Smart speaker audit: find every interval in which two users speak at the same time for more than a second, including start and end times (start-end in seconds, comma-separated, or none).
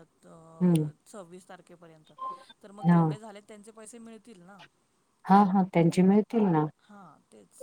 none